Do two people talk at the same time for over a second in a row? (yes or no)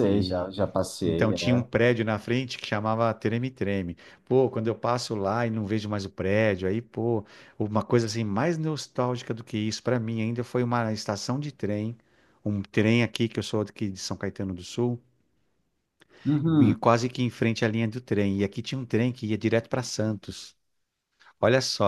no